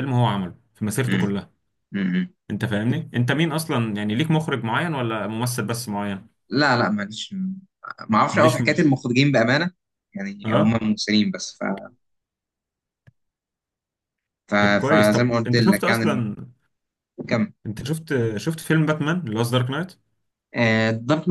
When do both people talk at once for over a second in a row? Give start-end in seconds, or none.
14.6-16.3